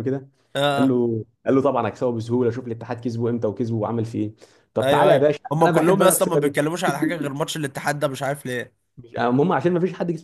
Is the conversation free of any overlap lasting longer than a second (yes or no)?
no